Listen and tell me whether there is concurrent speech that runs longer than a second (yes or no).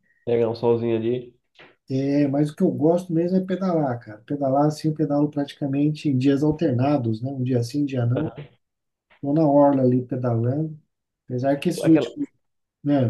no